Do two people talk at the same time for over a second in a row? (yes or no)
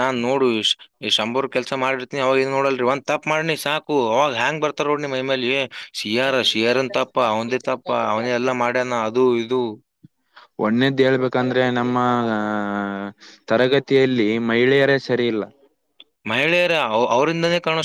no